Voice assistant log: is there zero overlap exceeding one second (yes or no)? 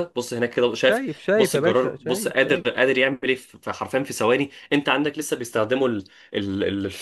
no